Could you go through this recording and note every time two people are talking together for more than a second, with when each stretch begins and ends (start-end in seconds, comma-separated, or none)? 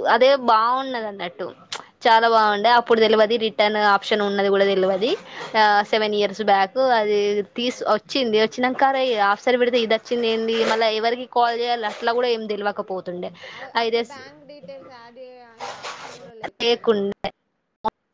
none